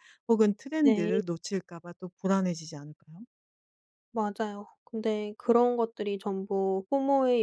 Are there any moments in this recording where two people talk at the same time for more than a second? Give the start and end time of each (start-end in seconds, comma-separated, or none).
none